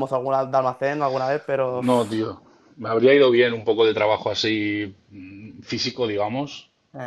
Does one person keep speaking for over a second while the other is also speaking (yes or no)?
no